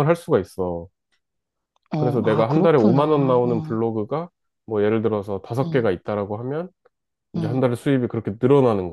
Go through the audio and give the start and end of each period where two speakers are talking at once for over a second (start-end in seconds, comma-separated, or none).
2.0-3.8